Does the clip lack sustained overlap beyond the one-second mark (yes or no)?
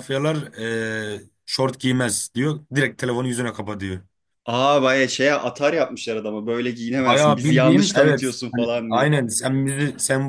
no